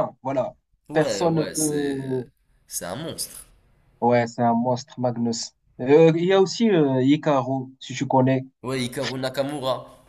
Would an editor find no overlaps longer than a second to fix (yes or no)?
no